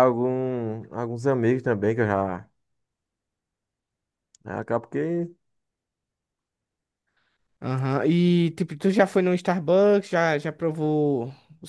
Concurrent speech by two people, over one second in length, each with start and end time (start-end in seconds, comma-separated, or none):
none